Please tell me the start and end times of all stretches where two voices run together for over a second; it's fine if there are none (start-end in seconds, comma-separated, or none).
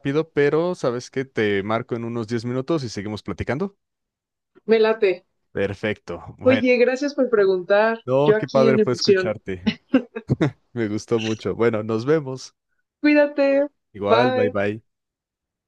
8.1-9.3